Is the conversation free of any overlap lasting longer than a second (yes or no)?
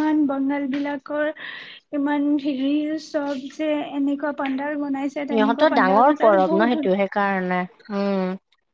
no